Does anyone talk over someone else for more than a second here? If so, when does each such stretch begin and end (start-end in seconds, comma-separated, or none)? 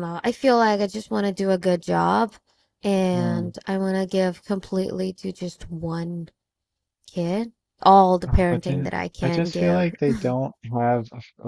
8.3-9.9